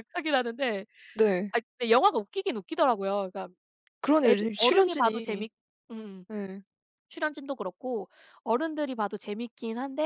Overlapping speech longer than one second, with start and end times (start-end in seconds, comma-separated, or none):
4.2-5.5